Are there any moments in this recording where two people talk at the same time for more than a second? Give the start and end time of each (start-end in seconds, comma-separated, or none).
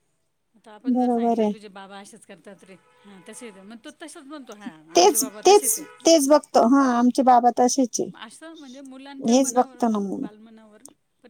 none